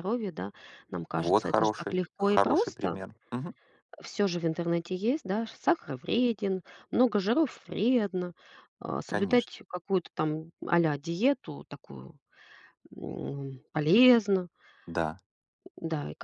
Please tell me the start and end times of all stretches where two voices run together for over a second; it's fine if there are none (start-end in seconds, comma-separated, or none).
1.1-3.0